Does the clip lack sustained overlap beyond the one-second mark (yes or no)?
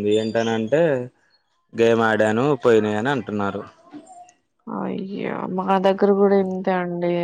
yes